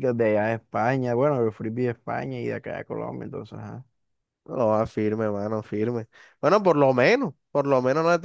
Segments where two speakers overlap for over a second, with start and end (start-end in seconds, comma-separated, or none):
none